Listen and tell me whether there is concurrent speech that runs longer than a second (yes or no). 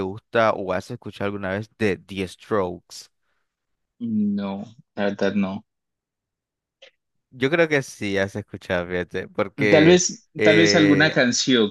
yes